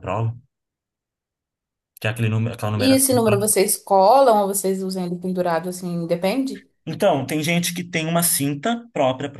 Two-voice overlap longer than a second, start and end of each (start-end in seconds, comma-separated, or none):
none